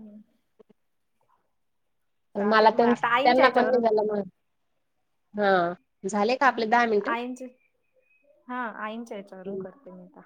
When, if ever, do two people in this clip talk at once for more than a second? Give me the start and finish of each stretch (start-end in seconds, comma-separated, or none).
2.5-3.8